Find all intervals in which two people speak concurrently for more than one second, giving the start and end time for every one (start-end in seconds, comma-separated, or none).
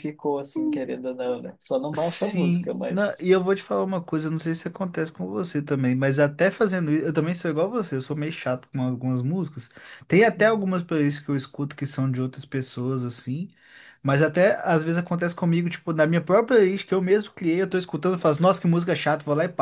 1.9-3.3